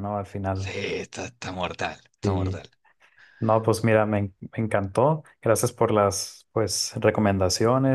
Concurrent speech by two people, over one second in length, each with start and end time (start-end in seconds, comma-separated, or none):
none